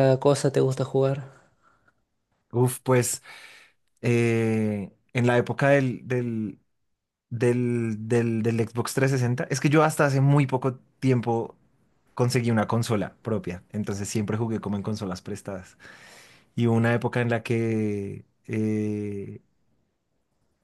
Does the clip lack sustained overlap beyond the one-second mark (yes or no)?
yes